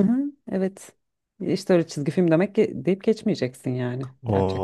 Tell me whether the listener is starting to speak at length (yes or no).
yes